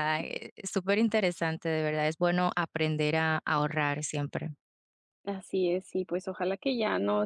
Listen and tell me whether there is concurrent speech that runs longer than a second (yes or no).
no